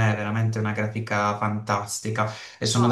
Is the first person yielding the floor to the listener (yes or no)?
yes